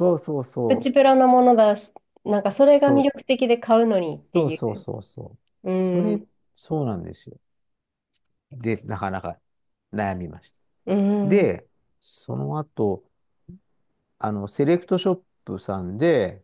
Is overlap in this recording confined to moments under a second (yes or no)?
yes